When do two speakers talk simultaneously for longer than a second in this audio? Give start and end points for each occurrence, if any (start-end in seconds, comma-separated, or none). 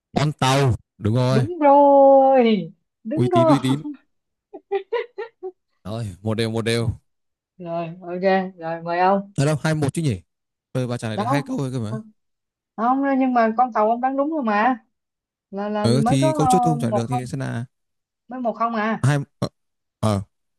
15.8-17.3